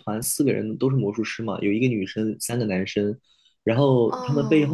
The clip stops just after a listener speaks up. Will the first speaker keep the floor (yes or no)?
yes